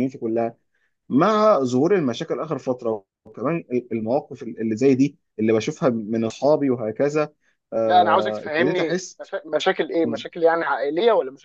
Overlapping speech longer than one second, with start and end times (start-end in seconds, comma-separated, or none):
7.9-9.2